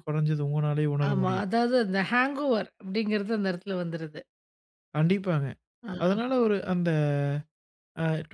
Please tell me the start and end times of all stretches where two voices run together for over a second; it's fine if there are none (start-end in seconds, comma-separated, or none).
none